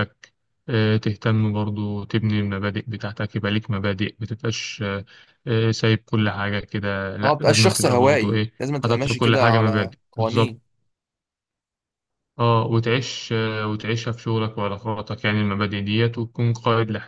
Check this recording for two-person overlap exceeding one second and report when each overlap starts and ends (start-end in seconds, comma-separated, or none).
7.2-10.6